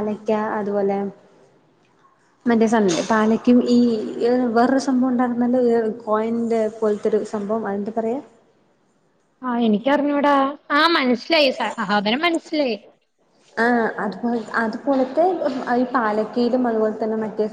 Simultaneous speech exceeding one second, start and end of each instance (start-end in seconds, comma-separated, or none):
none